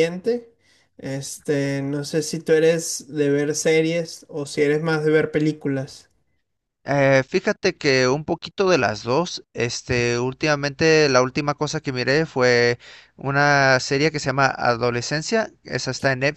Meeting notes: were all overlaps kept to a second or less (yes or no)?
yes